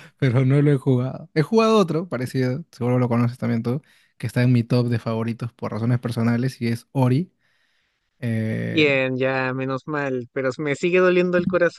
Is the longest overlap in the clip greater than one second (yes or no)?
no